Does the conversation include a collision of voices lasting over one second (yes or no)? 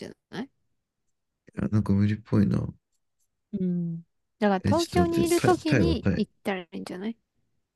yes